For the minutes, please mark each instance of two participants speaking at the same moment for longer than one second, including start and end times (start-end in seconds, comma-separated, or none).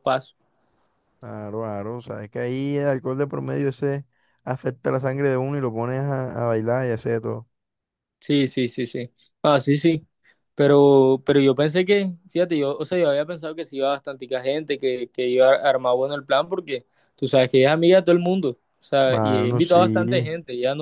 19.0-20.3